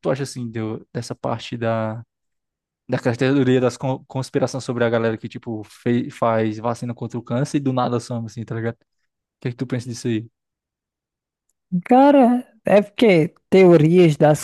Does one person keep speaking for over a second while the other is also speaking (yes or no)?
no